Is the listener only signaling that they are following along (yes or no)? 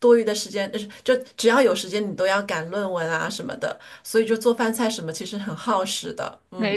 no